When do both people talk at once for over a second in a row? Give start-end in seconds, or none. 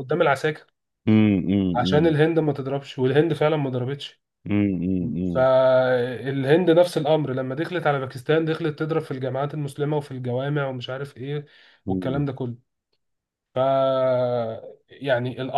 none